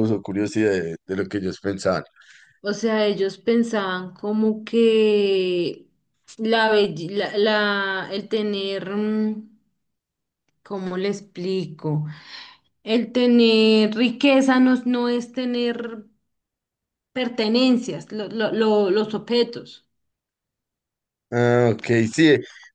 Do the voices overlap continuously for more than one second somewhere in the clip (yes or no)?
no